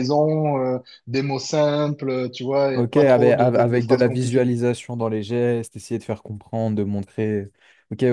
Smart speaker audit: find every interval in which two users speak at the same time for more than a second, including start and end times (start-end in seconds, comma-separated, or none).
2.8-4.5